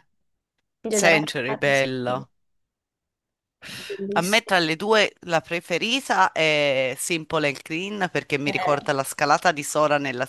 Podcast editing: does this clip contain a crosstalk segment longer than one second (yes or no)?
no